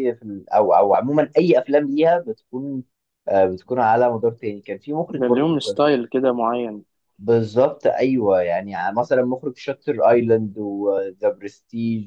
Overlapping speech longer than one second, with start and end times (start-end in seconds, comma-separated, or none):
none